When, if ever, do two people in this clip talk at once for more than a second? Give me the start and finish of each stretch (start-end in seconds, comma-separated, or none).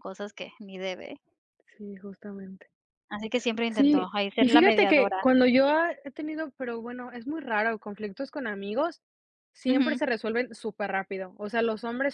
3.7-5.3